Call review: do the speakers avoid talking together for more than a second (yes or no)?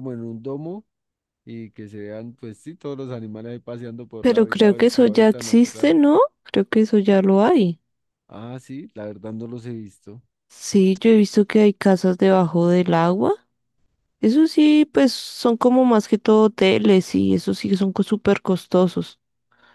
no